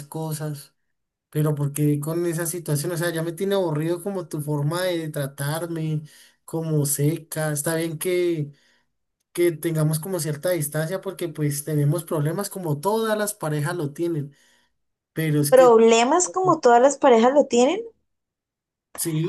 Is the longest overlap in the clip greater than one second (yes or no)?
no